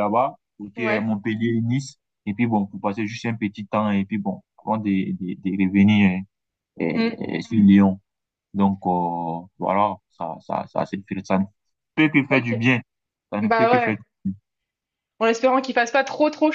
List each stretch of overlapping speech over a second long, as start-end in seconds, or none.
none